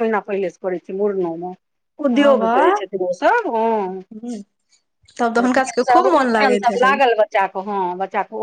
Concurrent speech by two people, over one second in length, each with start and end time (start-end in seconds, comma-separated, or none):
5.4-7.0